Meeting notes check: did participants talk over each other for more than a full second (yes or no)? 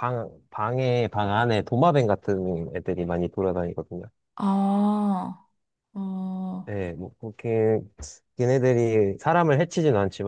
no